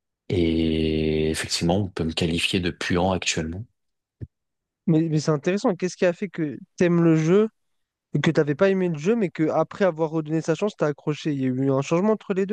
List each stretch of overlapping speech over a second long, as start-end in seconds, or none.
none